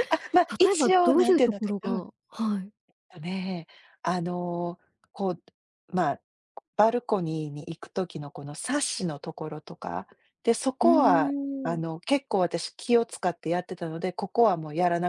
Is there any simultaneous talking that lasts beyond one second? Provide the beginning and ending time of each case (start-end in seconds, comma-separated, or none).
0.6-2.1